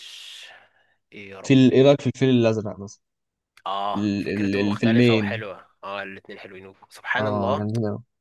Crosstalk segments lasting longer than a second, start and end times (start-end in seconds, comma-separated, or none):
3.9-5.4